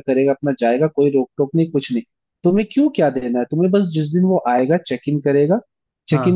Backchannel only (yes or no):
yes